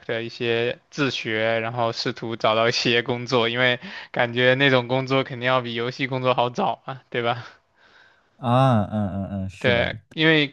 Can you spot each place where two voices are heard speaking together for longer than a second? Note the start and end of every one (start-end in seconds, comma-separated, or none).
none